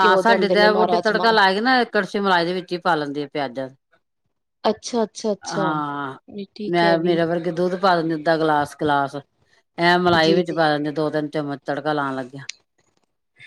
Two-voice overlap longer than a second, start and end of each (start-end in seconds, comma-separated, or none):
none